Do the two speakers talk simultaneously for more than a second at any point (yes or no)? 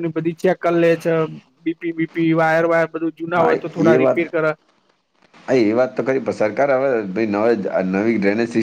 no